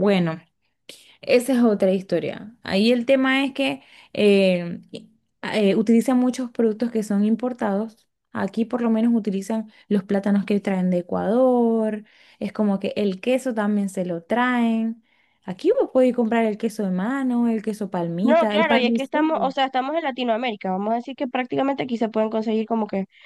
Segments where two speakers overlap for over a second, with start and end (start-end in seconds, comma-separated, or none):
18.2-19.5